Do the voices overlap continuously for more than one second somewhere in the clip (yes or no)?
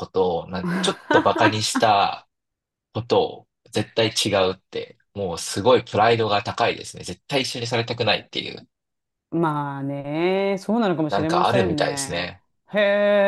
yes